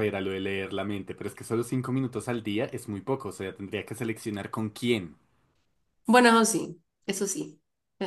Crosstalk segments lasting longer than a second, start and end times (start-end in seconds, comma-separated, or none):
none